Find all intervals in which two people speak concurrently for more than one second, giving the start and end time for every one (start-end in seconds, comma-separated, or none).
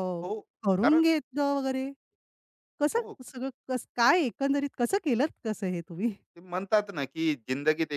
none